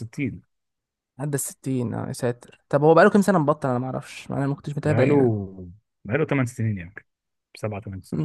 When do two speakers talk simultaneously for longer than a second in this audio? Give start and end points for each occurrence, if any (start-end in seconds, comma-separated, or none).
none